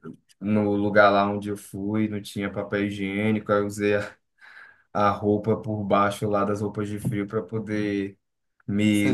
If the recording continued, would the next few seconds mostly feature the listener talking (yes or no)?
no